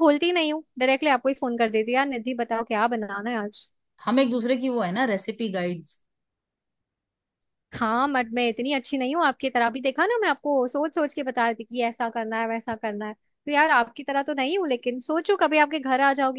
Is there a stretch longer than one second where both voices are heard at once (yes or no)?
no